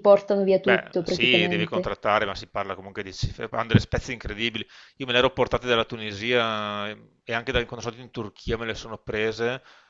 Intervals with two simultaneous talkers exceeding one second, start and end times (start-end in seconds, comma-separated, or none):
0.6-1.9